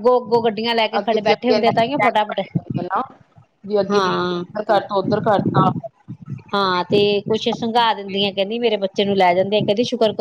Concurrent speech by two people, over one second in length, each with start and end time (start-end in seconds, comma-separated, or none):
1.0-2.4